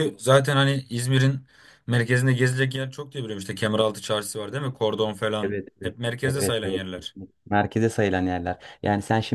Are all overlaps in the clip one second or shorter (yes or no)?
no